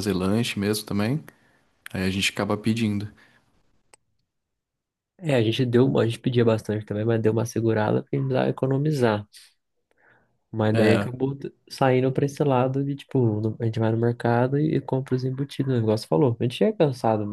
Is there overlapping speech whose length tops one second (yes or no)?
no